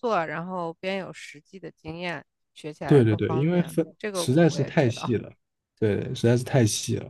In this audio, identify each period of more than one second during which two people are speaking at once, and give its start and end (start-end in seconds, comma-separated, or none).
2.9-5.2